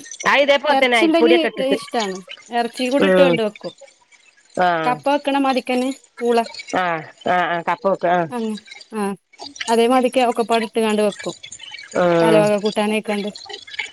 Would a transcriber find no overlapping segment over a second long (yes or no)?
yes